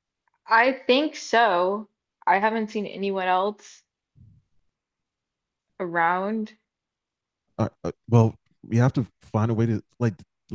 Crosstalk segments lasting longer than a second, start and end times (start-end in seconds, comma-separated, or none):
none